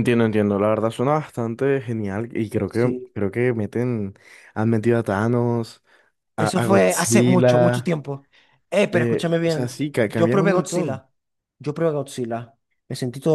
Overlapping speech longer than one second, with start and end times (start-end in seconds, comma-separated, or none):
6.4-8.0, 8.9-11.1